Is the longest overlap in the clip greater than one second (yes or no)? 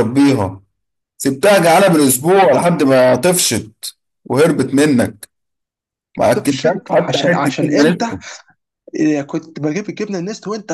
yes